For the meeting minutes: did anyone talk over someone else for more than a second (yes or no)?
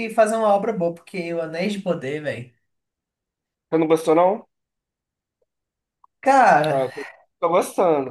no